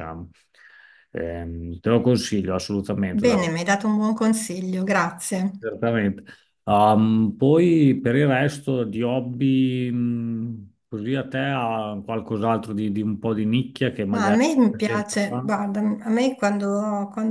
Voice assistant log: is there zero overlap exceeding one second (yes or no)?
no